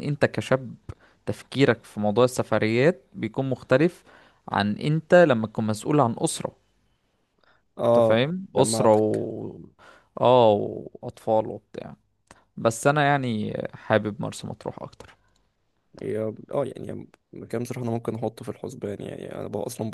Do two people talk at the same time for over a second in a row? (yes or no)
yes